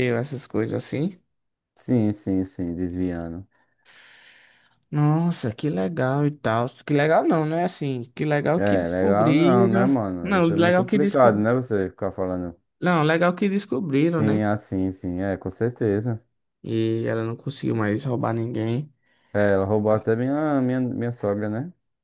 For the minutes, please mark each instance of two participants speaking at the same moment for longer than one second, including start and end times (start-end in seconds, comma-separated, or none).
8.6-11.4